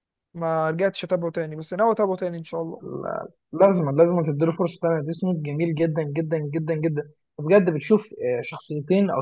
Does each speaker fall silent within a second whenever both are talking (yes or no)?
yes